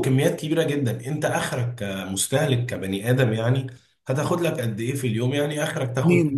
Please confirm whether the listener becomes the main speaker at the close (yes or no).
no